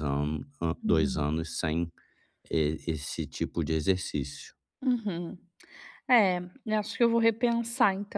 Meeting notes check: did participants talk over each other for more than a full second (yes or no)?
no